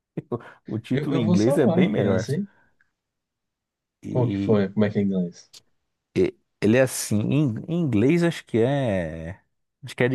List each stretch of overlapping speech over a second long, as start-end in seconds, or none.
0.9-2.2